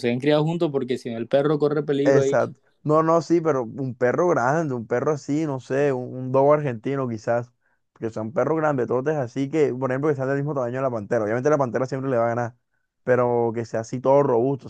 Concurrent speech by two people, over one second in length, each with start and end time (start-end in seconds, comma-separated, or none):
none